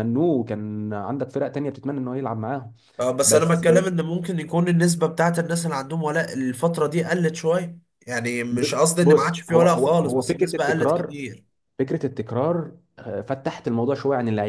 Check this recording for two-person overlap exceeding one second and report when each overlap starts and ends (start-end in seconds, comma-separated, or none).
8.5-11.1